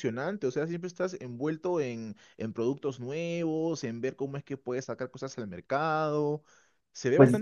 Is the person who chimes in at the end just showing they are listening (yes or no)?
no